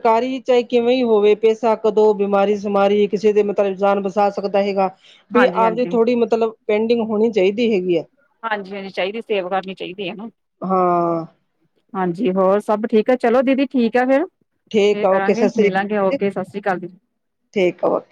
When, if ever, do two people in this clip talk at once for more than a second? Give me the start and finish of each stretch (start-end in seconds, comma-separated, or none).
14.7-16.2